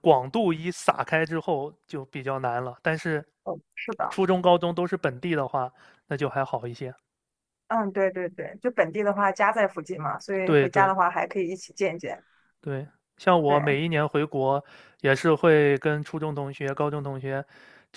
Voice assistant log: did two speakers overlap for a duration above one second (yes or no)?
no